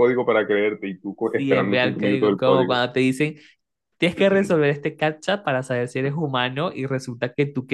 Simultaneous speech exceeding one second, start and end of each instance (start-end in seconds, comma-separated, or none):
1.3-2.8